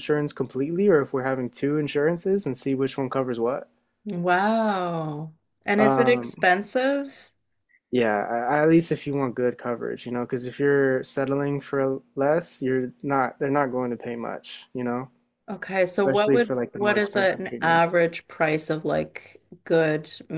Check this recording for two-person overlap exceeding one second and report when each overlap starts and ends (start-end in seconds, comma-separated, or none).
15.9-18.0